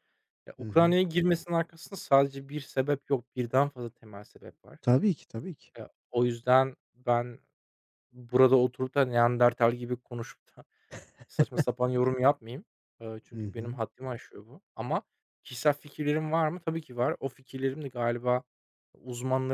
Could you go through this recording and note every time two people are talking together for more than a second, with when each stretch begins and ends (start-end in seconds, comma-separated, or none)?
none